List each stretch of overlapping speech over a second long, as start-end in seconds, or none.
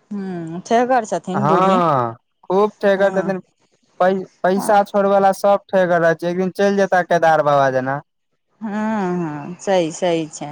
none